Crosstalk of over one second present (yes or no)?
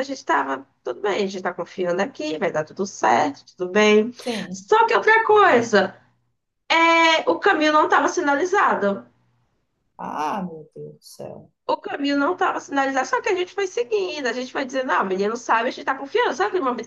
no